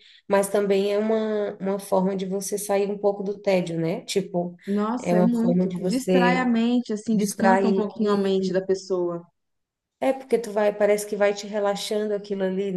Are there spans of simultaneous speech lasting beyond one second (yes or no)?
yes